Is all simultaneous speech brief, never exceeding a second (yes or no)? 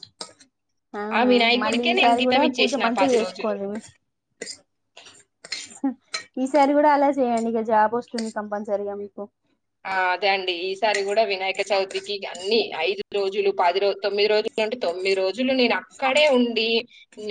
no